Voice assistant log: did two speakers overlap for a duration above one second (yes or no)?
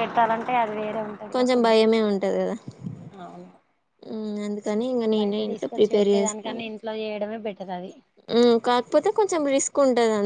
yes